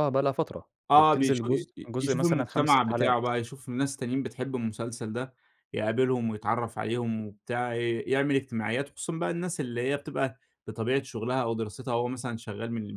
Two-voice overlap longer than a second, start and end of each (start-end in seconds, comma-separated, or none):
0.9-3.3